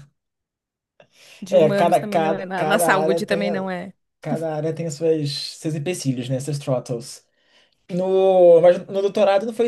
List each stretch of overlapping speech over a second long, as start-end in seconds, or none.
1.5-3.7